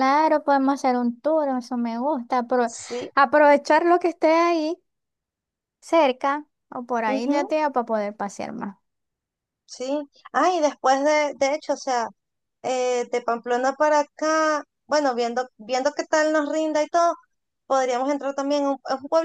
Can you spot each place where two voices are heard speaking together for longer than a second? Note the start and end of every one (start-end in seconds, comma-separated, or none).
none